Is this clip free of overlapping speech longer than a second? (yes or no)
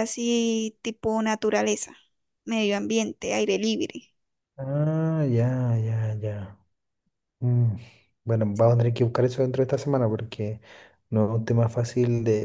yes